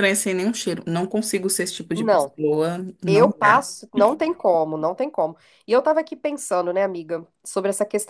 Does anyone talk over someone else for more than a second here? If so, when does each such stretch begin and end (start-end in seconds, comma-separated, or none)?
none